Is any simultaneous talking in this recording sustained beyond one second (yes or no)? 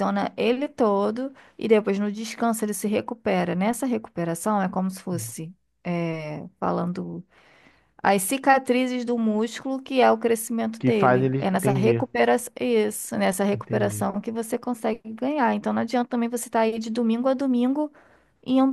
yes